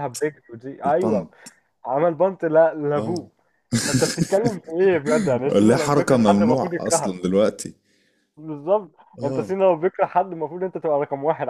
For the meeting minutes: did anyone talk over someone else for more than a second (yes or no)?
yes